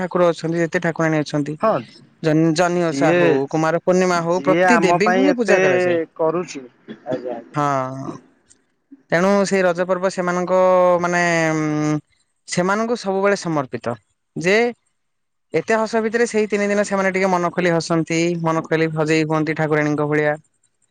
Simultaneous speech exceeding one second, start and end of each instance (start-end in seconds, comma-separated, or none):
2.9-5.6